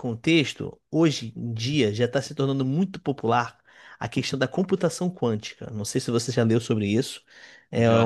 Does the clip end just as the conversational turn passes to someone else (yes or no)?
no